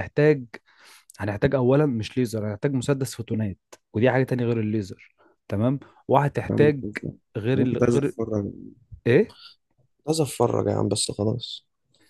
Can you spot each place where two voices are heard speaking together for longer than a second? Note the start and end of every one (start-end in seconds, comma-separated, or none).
none